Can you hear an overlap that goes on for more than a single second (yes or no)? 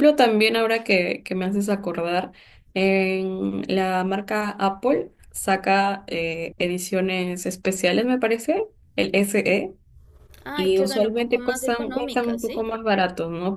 yes